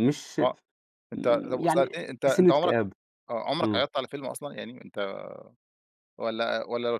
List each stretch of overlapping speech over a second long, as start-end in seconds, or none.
1.1-2.8